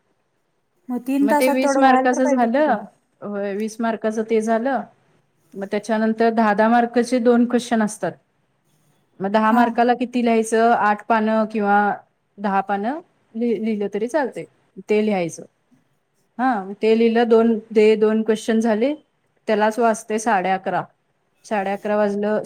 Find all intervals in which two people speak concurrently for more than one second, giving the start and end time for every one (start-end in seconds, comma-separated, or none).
1.2-2.8